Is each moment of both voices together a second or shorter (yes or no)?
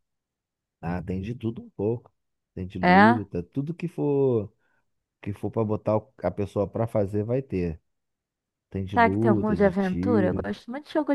no